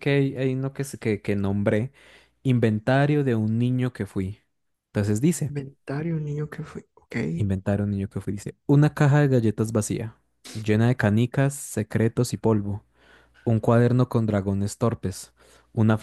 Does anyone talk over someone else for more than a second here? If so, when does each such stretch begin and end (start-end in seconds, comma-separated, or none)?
none